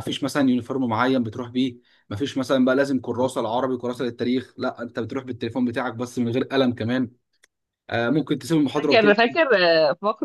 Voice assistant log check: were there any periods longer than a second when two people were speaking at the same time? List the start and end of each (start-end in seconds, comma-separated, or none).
none